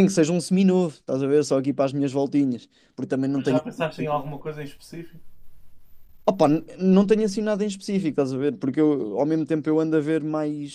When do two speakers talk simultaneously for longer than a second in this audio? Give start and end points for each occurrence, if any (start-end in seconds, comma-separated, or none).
none